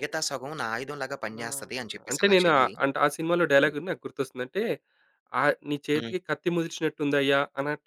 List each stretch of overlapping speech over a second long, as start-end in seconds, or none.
none